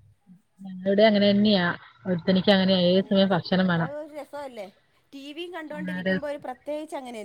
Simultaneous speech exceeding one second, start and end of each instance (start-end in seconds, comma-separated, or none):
none